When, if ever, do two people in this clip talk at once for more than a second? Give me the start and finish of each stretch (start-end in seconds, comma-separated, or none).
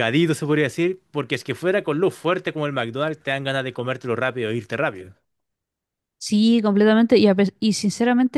none